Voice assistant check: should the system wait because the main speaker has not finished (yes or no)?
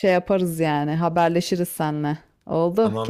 no